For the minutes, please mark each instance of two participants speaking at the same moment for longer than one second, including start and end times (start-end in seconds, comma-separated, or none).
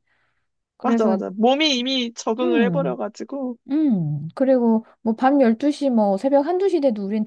none